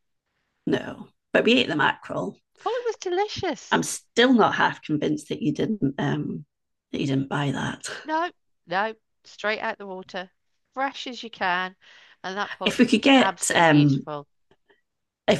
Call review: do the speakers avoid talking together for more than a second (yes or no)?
no